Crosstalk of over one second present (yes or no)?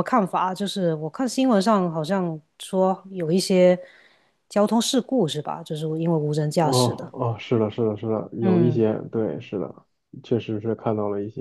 no